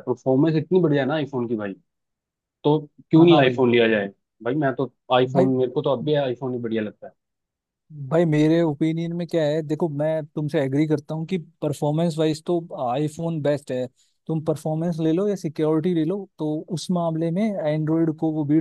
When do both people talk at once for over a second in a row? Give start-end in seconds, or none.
none